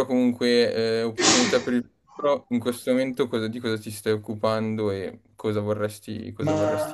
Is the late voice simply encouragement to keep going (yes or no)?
no